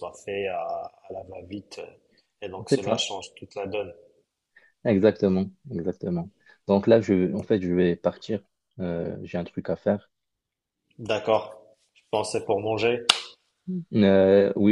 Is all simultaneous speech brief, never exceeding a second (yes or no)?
yes